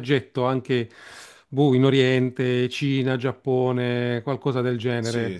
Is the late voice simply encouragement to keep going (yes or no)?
no